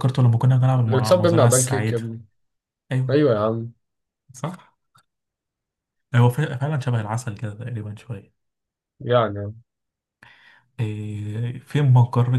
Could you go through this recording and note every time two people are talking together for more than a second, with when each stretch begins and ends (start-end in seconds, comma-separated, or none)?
0.9-2.1